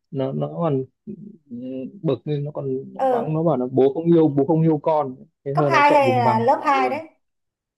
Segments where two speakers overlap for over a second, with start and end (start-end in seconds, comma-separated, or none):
5.5-7.0